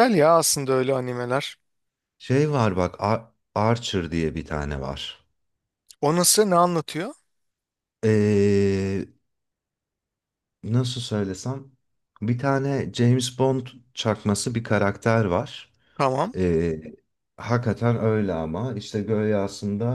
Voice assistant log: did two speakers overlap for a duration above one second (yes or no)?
no